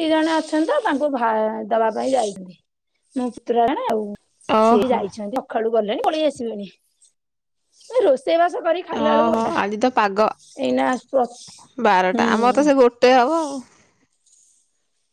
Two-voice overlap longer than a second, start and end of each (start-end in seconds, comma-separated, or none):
none